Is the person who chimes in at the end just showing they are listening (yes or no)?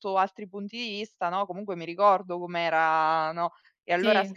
yes